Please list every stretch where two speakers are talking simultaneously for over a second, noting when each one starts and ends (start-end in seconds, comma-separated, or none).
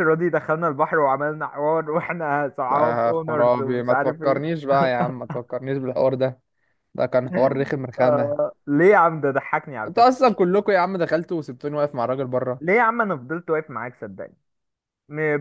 2.7-4.6